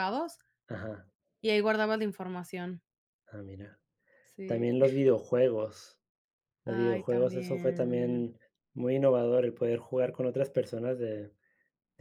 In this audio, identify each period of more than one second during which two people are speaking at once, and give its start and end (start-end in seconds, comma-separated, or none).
6.6-8.3